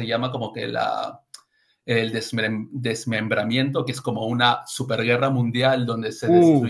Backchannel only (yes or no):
yes